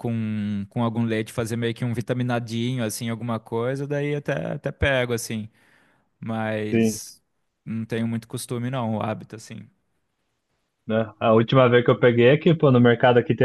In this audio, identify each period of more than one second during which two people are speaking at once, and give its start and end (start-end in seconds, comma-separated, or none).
none